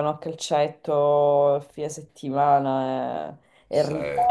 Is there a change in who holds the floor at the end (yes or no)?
no